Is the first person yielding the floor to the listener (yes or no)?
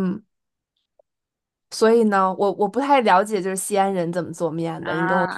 yes